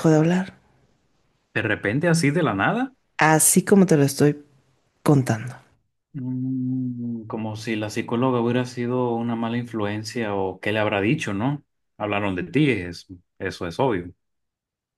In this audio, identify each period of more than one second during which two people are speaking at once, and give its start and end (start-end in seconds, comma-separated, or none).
none